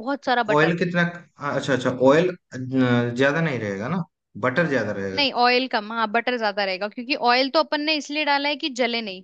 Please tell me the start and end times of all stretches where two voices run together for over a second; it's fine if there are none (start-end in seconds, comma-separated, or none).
none